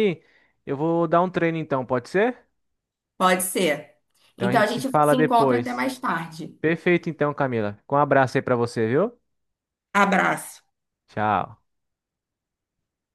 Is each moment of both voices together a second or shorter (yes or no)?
no